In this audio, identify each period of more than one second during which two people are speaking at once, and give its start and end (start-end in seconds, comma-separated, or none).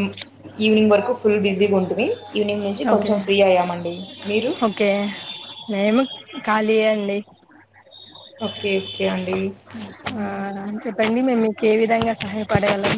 none